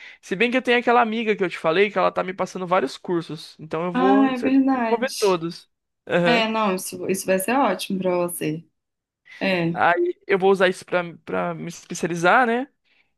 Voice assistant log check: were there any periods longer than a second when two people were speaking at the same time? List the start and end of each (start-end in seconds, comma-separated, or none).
3.9-5.4